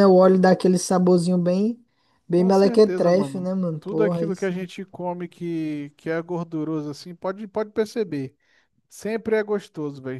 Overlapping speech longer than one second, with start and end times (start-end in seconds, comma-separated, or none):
2.3-4.7